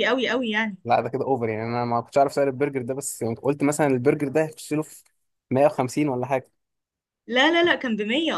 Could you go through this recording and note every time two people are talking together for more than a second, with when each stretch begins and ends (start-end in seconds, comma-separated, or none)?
none